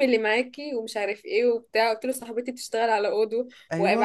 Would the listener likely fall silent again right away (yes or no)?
yes